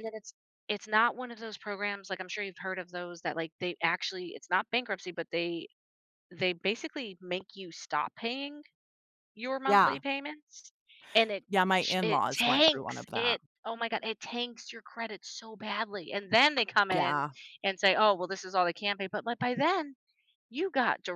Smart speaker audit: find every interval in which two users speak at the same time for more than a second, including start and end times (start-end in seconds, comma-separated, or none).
11.5-13.4